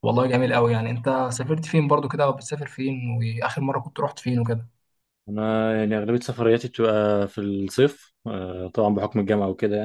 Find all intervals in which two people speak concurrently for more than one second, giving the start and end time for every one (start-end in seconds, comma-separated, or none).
none